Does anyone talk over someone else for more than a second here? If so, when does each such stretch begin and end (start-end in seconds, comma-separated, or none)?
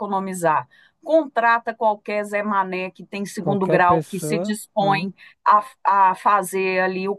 3.4-5.1